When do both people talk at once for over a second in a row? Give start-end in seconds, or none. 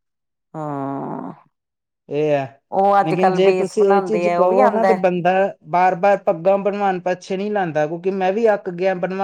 3.0-5.0